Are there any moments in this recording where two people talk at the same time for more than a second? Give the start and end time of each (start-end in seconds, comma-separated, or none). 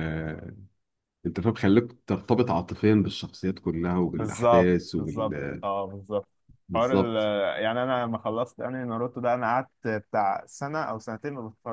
4.1-5.7